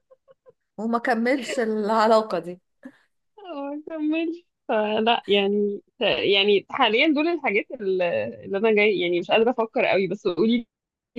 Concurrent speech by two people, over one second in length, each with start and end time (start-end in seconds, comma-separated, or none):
none